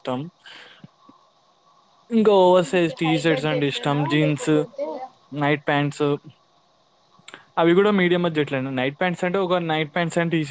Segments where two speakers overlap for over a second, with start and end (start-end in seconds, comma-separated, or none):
2.8-4.5